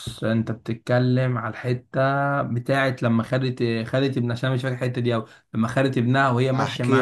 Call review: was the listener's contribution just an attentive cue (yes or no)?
no